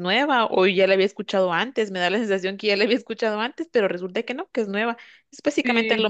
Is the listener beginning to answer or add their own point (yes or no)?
no